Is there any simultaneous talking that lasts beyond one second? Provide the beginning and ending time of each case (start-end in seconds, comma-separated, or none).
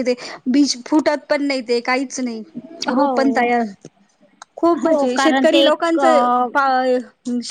4.8-6.3